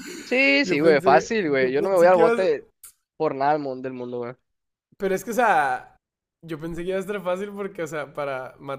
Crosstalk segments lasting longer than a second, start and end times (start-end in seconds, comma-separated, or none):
0.6-2.5